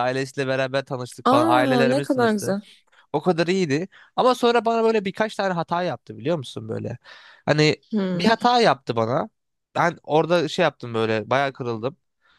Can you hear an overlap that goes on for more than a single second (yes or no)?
yes